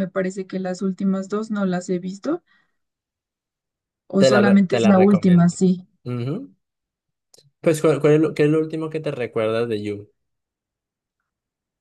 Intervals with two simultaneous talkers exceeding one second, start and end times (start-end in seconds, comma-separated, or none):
4.2-5.6